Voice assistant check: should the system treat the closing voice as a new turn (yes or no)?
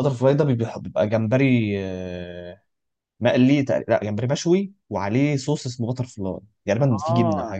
yes